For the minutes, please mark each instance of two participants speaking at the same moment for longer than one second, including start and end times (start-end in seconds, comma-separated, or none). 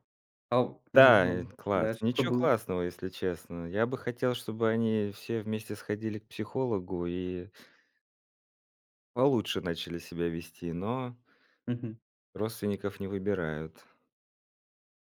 0.9-2.6